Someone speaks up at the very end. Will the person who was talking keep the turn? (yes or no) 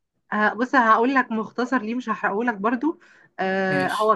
yes